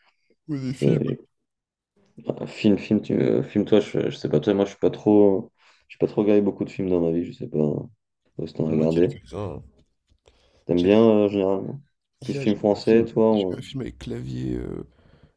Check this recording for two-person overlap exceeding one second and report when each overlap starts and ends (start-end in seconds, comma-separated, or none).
12.2-13.6